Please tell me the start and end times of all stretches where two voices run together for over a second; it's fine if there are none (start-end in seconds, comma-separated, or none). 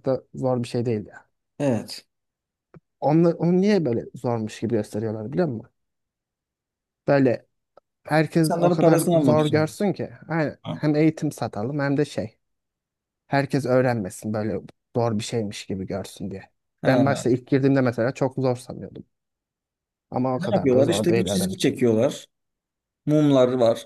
8.4-9.7, 20.4-21.7